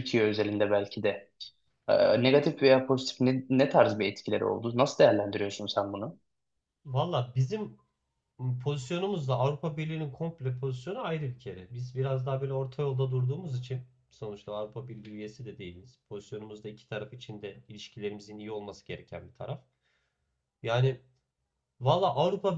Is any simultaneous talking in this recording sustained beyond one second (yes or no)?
no